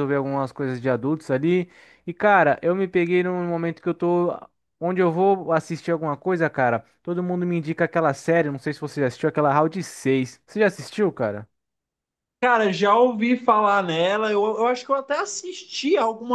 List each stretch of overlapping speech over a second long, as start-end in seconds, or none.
none